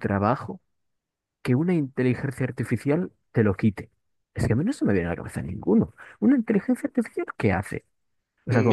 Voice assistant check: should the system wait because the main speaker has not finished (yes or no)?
no